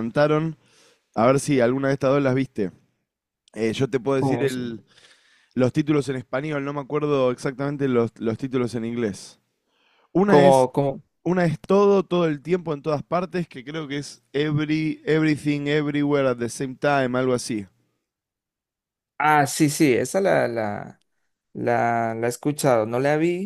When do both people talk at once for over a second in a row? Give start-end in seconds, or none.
none